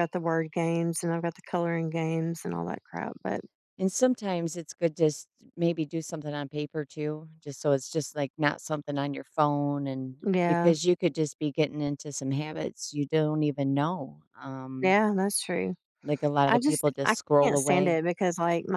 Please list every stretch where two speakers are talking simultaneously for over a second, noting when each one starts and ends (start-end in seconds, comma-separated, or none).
16.5-17.9